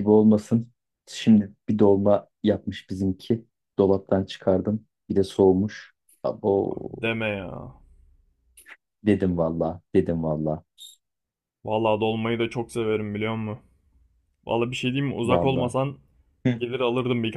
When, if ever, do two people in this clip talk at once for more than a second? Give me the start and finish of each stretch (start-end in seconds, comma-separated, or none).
none